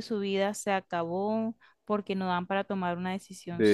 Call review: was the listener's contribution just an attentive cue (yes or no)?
no